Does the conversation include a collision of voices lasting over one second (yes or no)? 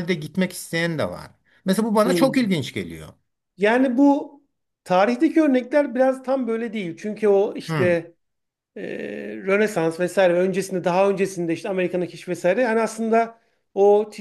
no